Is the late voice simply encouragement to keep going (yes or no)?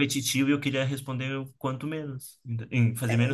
no